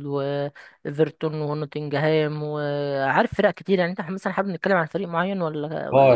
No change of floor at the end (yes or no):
no